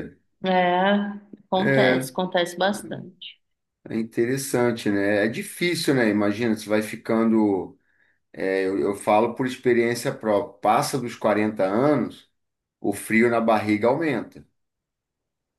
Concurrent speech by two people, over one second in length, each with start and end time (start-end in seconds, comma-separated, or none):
none